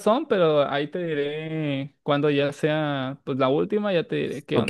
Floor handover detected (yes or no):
yes